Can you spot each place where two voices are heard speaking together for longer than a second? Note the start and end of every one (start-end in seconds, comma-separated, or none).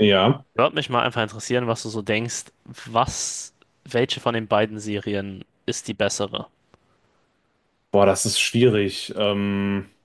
none